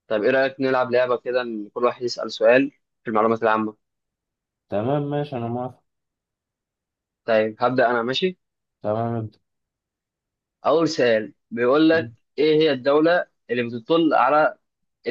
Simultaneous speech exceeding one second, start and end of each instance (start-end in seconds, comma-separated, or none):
none